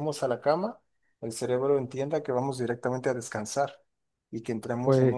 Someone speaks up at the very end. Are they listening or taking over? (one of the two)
listening